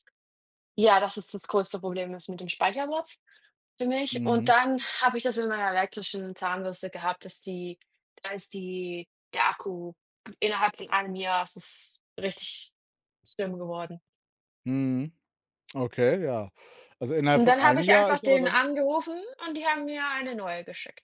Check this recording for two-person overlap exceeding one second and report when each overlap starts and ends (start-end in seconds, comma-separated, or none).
17.3-18.6